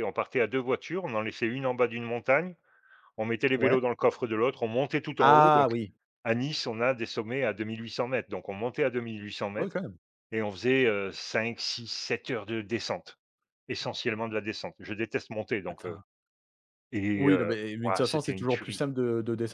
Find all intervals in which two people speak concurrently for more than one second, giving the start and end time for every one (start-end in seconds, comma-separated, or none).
17.1-18.8